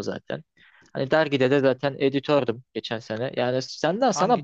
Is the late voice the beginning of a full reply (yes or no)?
no